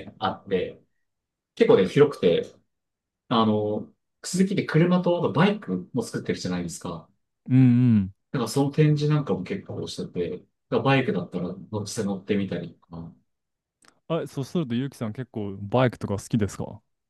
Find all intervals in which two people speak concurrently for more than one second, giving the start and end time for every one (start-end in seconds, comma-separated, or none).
none